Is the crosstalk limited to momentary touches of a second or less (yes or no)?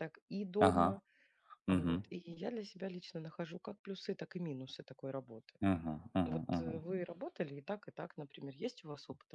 yes